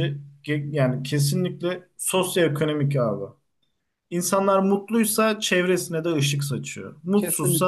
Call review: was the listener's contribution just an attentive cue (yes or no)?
yes